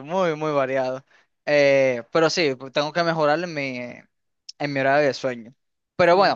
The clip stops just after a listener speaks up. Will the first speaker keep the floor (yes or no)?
yes